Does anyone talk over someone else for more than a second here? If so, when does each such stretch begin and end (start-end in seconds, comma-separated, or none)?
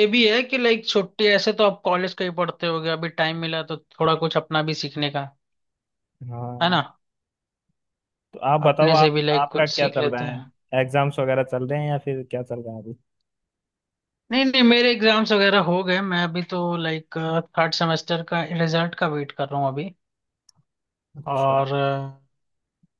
8.7-10.4